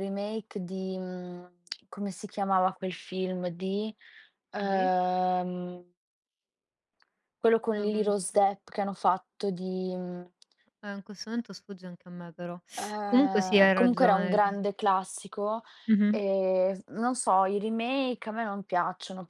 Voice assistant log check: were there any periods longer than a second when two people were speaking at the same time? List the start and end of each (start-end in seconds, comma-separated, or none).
13.0-14.4